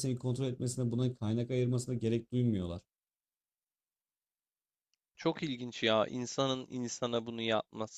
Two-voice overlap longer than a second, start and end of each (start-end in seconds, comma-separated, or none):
none